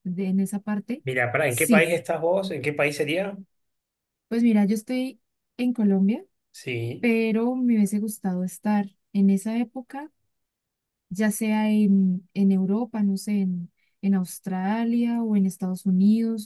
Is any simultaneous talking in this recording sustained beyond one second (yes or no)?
no